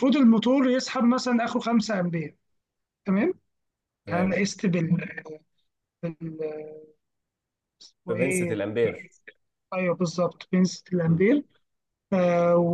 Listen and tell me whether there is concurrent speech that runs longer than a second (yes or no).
no